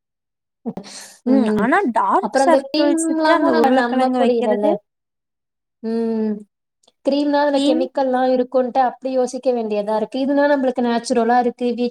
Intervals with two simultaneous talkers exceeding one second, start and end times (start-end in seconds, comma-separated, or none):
2.3-4.7